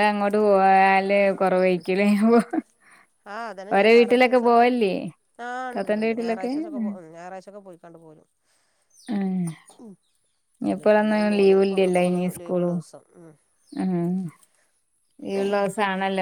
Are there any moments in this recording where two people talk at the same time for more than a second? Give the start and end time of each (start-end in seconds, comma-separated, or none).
10.7-12.8